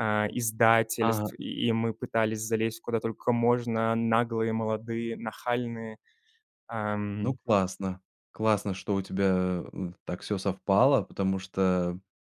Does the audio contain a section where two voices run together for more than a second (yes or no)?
no